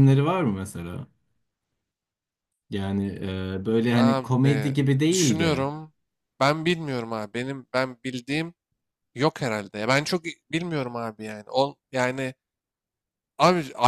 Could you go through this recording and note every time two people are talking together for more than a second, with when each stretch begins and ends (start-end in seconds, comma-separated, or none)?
3.9-5.7